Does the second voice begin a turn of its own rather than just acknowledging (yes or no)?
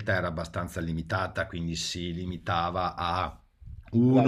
no